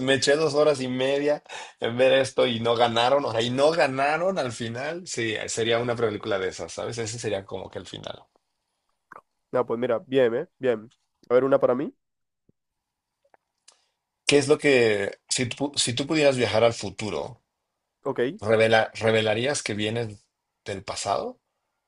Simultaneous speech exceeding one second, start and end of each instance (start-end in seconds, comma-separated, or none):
none